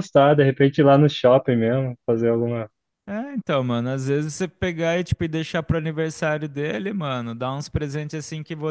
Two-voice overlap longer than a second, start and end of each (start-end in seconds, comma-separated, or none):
none